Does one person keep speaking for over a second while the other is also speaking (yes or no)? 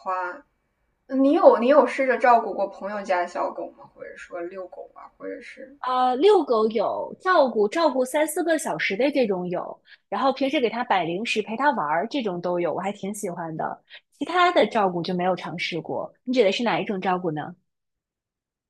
no